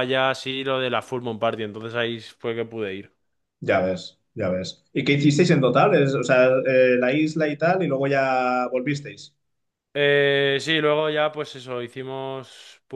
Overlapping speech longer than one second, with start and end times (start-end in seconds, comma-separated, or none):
none